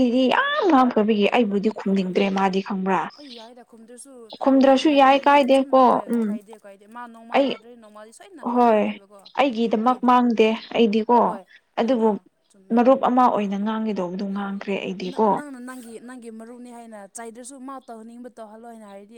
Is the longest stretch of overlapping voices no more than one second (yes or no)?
no